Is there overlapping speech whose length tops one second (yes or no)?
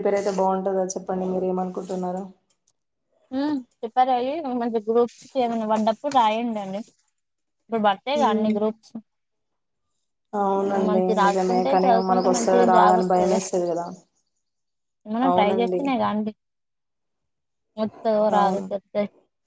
yes